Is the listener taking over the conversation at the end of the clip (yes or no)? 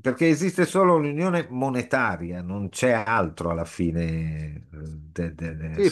yes